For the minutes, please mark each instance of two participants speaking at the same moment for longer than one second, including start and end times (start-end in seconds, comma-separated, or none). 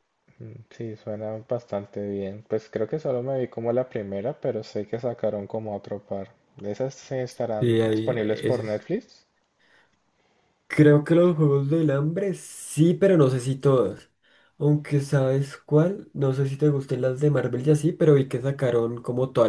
7.6-8.8